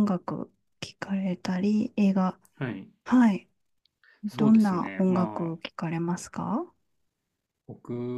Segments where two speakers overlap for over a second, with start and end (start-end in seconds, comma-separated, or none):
4.3-5.6